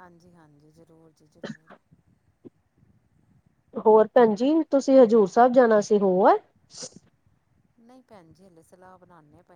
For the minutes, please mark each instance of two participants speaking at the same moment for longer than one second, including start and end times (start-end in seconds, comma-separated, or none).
none